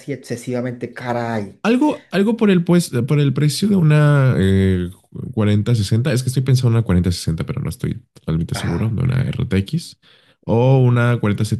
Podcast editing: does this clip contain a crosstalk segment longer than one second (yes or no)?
no